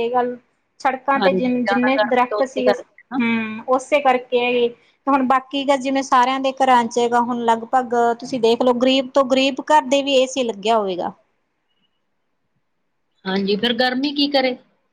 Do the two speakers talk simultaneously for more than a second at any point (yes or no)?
yes